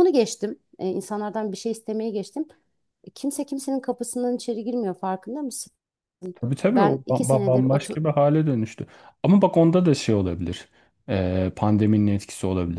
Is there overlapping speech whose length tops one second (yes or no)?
yes